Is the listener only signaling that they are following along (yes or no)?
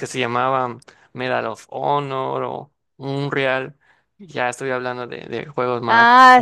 no